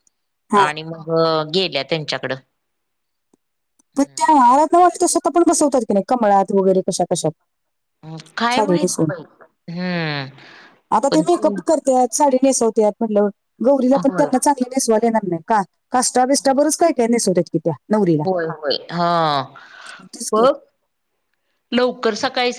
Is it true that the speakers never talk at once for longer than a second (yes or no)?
yes